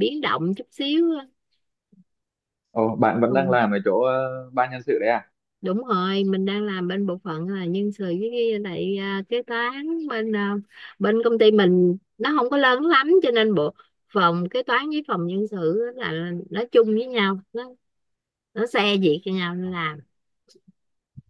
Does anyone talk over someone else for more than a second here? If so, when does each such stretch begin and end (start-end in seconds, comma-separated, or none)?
none